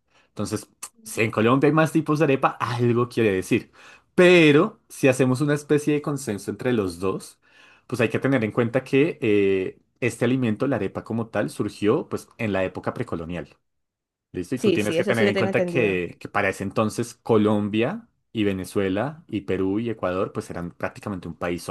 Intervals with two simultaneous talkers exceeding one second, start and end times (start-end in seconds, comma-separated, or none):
14.6-16.1